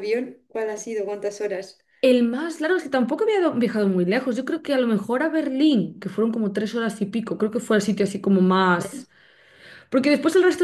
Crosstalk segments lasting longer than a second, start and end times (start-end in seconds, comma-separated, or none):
none